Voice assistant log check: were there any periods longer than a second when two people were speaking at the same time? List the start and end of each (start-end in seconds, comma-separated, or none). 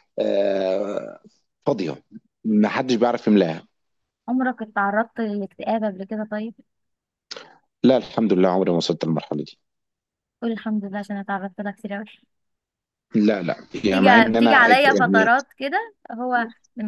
13.9-15.3